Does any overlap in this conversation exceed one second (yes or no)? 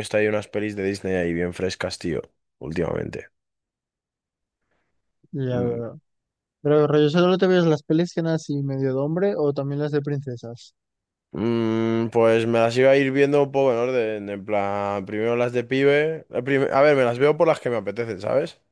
no